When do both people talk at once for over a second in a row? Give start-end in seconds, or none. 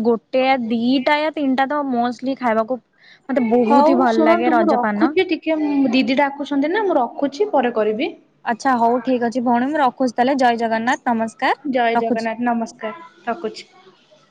3.7-5.1